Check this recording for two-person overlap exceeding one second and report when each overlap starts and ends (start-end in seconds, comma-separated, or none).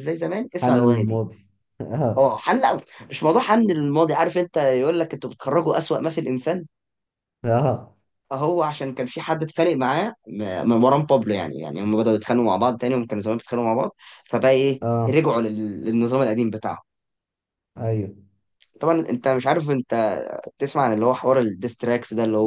none